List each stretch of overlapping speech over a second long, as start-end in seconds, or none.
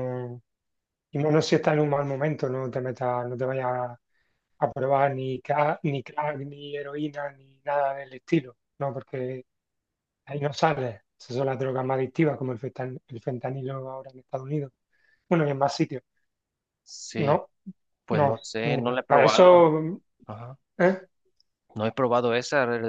18.1-19.7